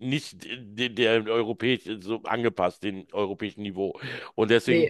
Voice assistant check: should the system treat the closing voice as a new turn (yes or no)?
no